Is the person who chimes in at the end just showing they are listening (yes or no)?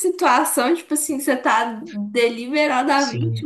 yes